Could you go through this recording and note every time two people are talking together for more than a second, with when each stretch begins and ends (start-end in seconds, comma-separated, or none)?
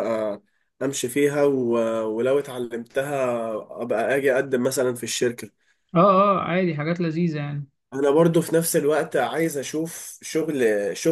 none